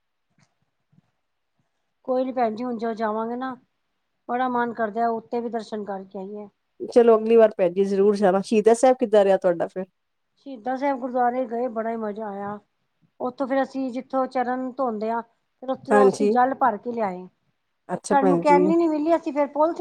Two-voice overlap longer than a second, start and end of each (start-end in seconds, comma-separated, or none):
none